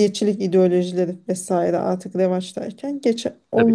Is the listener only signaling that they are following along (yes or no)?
yes